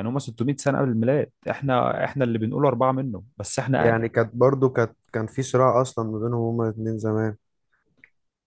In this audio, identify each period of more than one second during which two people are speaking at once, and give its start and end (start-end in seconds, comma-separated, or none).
none